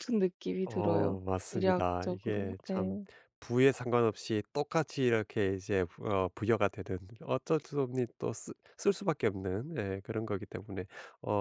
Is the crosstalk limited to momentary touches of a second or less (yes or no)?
no